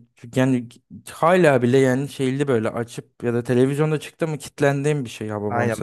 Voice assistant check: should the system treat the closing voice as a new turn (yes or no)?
yes